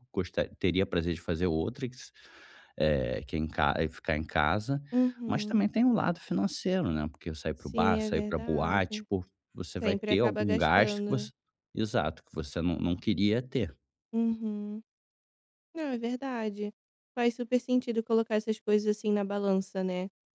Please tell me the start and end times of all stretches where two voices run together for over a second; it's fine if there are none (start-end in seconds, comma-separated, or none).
7.5-9.1, 9.8-11.3